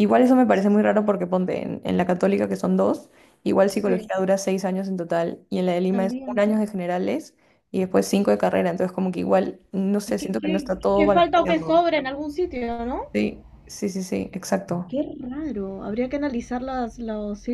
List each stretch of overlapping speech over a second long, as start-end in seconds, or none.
10.1-11.7